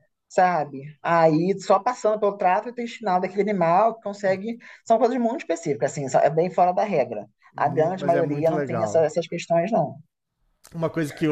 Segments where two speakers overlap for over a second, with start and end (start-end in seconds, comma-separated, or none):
7.5-9.1